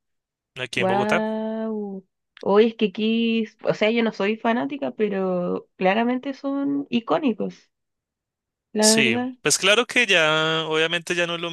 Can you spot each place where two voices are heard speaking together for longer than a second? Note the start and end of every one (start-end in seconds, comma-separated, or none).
none